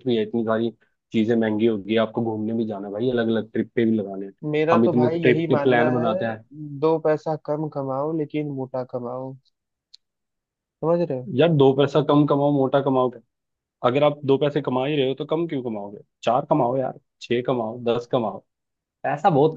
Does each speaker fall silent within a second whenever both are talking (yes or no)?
no